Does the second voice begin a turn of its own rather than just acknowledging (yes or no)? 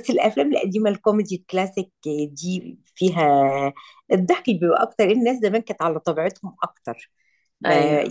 no